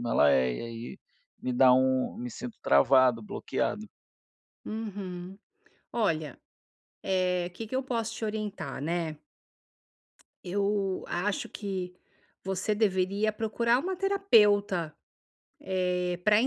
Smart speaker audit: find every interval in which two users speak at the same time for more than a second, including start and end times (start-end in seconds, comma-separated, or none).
none